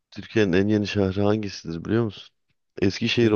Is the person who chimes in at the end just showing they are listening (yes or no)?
yes